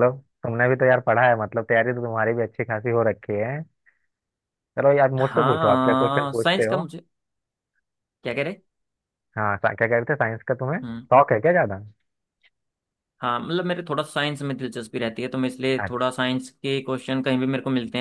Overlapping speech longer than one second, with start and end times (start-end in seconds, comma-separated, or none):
5.2-6.8